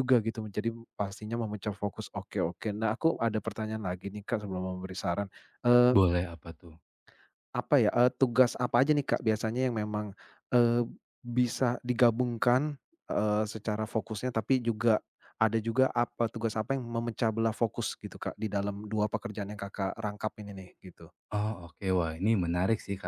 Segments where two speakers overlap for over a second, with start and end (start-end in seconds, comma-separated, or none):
none